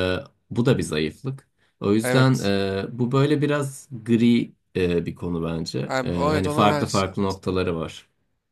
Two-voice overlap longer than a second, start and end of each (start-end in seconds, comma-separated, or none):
5.9-7.1